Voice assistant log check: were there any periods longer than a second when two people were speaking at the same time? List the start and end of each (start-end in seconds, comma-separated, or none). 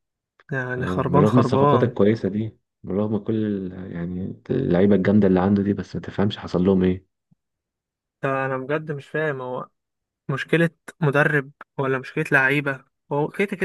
0.8-2.0